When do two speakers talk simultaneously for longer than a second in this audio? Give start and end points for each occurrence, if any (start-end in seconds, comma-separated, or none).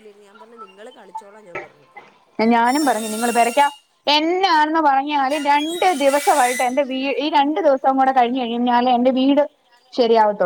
none